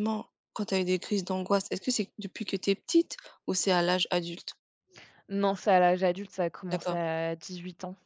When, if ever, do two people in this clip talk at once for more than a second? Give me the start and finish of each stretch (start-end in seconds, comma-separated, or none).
none